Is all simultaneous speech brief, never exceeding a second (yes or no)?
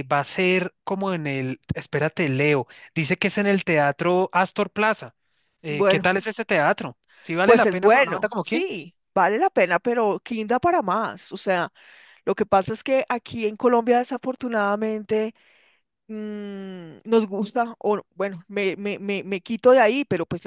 no